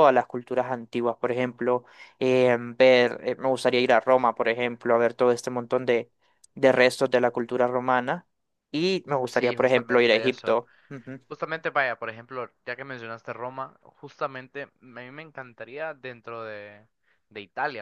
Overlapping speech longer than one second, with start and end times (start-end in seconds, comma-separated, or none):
9.3-10.6